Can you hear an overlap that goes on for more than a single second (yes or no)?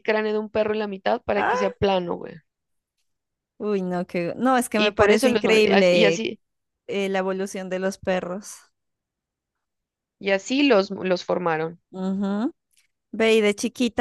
yes